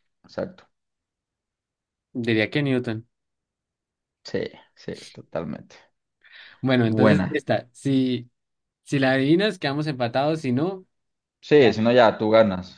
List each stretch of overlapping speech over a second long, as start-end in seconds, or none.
none